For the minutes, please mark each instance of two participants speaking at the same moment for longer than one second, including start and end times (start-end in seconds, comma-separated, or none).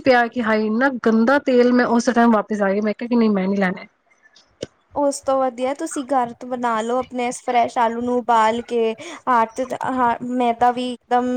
none